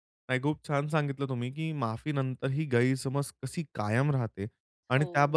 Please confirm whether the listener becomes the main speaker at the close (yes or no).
no